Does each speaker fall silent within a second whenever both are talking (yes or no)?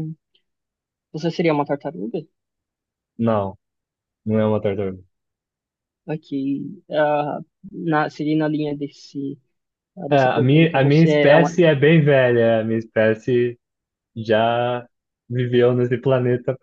no